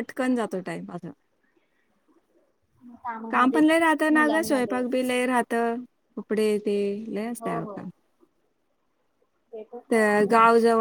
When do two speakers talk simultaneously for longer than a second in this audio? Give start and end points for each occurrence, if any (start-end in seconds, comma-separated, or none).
3.3-4.8